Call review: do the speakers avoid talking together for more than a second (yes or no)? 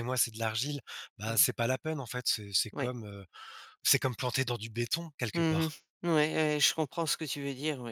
yes